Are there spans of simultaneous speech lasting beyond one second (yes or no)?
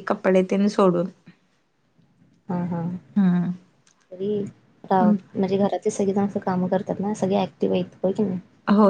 no